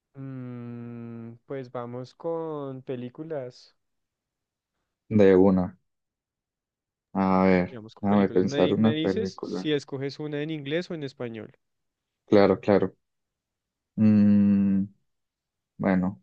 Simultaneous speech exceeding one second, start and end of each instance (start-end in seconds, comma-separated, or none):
7.7-9.7